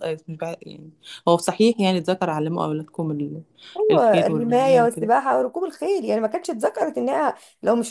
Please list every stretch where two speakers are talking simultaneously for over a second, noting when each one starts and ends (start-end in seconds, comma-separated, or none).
3.9-5.1